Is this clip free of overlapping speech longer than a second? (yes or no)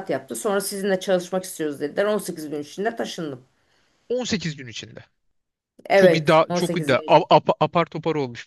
no